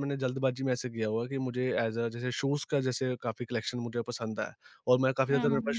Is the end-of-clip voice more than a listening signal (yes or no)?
no